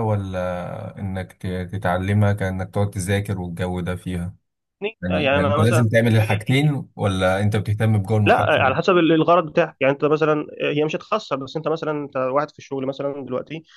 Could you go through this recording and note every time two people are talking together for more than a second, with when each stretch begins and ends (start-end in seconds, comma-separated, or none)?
5.0-6.4